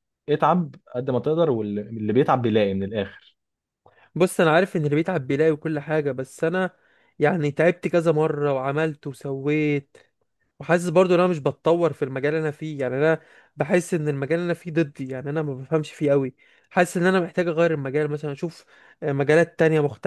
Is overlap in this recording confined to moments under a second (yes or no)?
yes